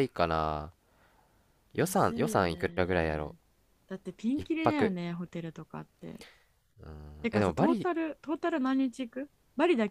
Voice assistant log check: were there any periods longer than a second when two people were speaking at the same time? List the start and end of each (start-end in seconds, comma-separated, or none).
1.7-3.3